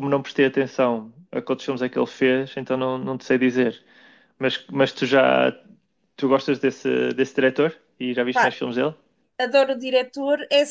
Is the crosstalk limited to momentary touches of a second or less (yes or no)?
yes